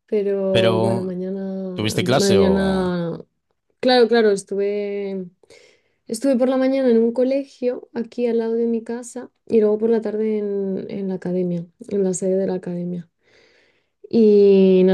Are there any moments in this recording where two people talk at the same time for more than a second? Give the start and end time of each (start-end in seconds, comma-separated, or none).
1.7-2.9